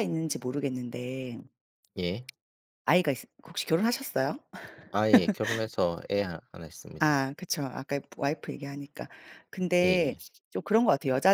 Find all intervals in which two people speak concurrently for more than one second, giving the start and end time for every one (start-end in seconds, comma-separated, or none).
none